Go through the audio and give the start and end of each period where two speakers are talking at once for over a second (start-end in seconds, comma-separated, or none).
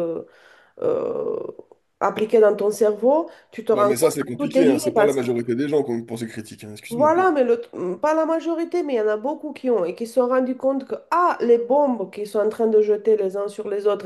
3.7-5.2